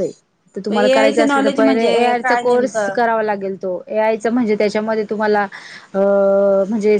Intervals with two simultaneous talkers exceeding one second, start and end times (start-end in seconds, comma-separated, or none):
0.7-3.0